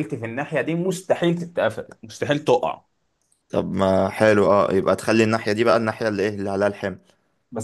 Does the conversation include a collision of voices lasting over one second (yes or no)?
no